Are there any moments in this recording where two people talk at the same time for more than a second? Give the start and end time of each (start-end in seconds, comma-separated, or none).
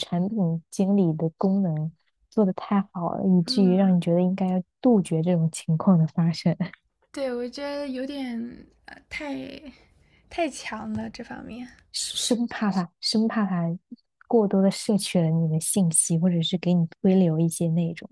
none